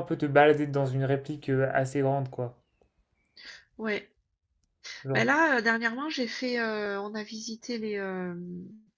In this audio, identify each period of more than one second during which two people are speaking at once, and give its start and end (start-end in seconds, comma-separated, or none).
none